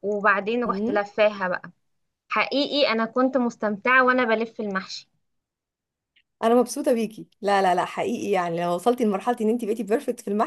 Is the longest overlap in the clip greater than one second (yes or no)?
no